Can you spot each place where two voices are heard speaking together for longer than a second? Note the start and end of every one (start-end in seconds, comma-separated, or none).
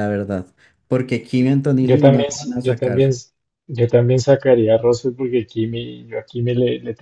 1.8-3.2